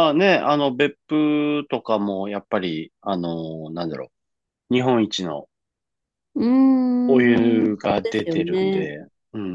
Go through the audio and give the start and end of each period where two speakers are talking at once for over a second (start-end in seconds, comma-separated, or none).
7.1-8.9